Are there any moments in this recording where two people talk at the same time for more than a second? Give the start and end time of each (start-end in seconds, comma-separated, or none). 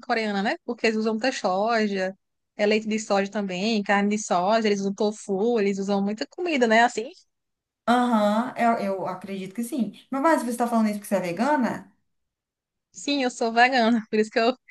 none